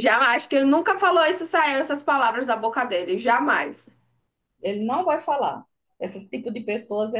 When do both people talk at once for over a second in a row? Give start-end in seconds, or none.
none